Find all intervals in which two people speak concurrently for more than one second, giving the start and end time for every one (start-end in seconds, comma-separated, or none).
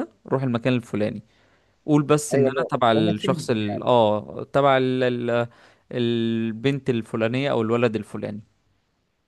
2.3-3.9